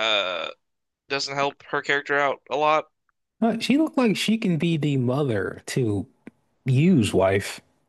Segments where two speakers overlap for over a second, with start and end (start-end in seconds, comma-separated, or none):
none